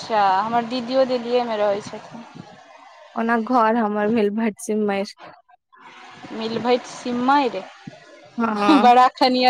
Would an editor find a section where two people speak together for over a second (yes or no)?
no